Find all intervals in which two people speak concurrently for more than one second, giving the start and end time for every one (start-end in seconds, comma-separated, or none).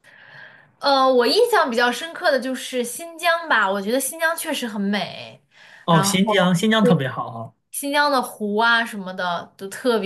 none